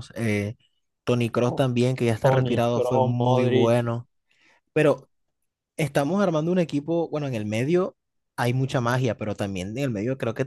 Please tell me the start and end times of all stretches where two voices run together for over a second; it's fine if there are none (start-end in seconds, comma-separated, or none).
2.2-3.8